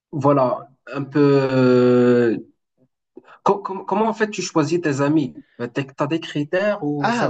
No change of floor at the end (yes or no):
no